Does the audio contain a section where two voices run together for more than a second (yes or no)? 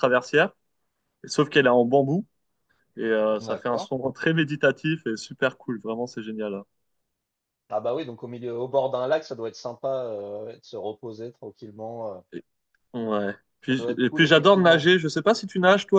yes